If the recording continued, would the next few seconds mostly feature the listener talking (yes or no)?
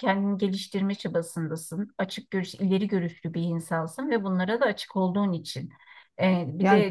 no